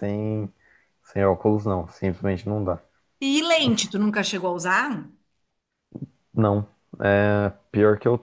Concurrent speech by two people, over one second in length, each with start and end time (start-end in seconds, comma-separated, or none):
none